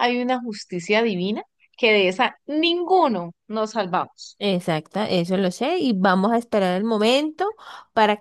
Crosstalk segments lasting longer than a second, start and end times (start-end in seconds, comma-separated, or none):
none